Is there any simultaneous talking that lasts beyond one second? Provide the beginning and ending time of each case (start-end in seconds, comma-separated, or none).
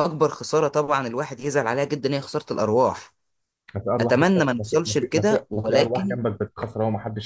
4.0-6.2